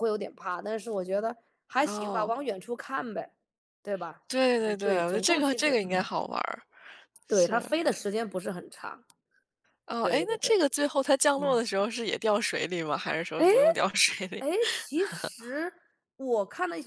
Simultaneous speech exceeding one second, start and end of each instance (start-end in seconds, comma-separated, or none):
4.6-6.1